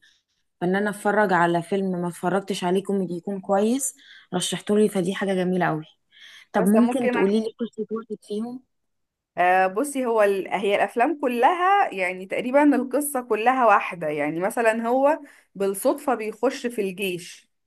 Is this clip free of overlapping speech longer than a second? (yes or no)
yes